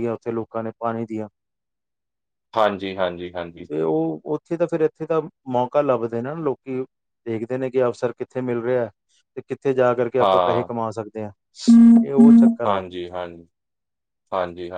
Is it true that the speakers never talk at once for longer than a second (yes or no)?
yes